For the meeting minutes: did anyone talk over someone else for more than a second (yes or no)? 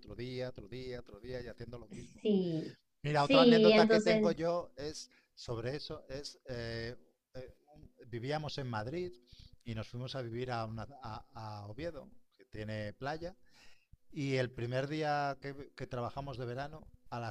yes